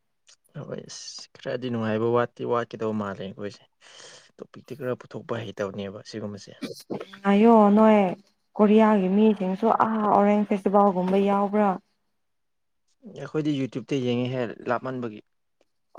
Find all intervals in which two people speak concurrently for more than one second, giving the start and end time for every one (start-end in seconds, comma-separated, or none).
none